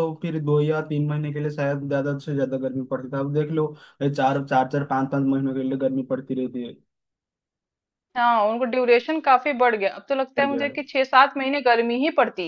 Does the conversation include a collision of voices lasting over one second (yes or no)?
no